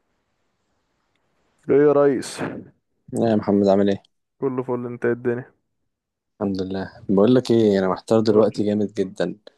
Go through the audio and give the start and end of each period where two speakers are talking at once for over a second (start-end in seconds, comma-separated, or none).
none